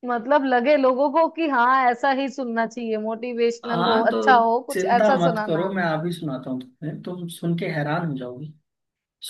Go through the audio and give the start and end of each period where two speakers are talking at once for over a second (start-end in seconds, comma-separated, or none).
3.6-5.7